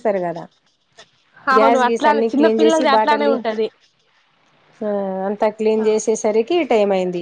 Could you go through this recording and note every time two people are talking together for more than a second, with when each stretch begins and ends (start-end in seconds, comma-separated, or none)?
1.6-3.4